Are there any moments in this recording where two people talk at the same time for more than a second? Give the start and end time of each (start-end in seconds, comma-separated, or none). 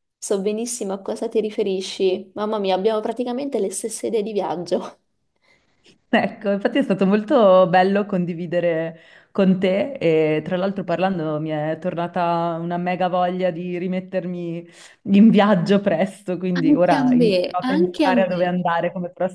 16.5-18.6